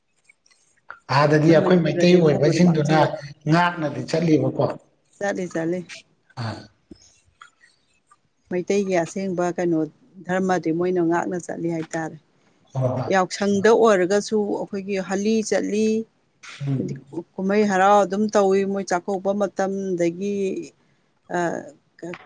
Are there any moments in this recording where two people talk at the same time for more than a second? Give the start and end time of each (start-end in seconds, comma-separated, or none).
1.6-3.0